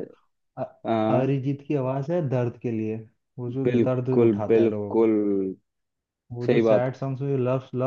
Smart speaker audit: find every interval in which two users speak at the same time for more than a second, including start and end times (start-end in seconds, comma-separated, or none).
3.6-5.1